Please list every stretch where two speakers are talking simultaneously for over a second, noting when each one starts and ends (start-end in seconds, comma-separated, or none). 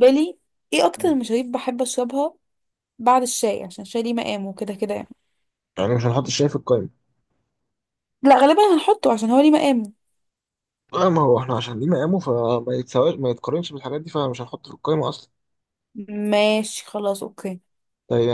none